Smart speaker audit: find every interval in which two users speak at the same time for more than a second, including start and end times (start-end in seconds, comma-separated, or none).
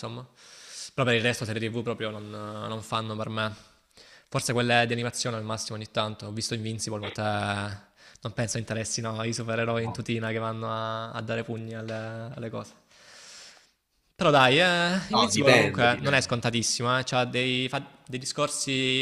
15.1-16.4